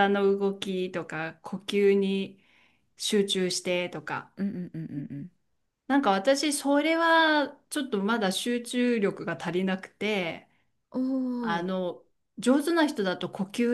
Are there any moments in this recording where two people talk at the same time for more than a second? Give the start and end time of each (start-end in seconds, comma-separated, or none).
none